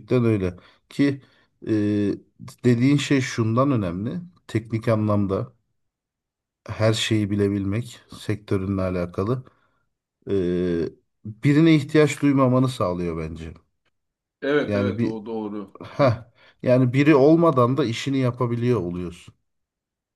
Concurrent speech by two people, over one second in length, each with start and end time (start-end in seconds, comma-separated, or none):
none